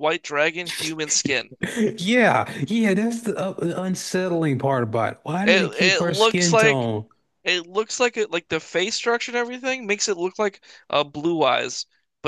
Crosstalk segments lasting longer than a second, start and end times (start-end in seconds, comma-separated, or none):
5.4-6.9